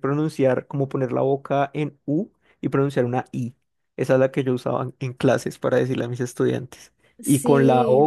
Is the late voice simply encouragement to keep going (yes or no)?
yes